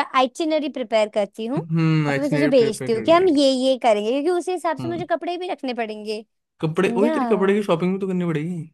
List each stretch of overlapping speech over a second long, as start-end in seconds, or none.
1.6-3.4